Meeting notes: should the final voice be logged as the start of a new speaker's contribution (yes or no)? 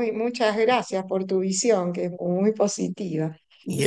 no